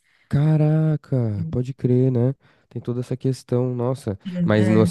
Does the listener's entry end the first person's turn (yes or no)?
no